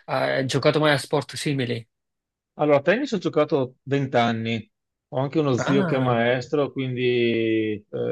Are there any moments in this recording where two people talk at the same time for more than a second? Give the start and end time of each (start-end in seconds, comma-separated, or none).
none